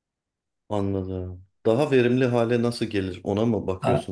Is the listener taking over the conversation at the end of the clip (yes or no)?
yes